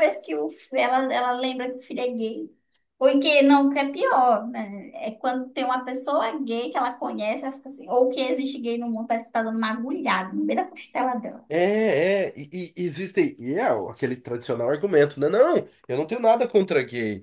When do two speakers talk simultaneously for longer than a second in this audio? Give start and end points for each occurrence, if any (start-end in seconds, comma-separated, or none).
none